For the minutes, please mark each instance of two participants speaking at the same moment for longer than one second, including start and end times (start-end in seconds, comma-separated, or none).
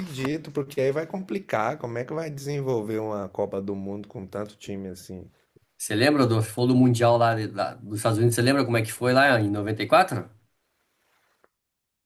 none